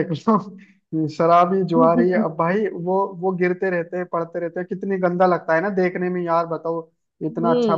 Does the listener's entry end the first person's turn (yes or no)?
no